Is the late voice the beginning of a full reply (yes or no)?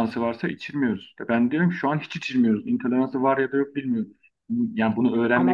yes